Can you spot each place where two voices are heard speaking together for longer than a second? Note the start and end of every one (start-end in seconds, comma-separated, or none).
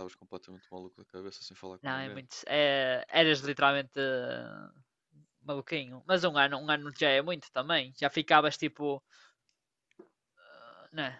none